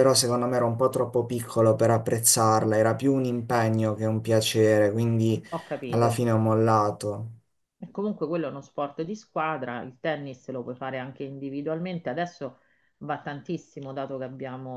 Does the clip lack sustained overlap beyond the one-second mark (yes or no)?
yes